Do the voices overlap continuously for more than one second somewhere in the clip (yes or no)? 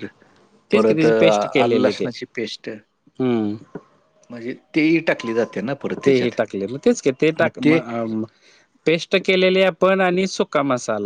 yes